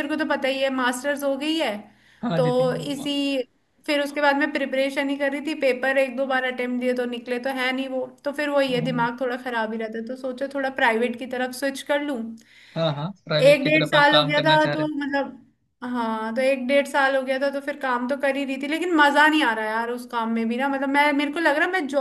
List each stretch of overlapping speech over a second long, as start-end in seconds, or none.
13.5-14.9